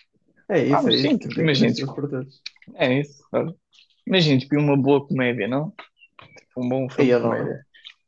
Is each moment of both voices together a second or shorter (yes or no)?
no